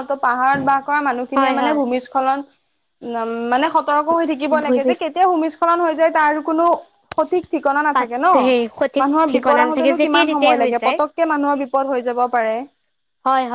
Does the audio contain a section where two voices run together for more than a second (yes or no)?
yes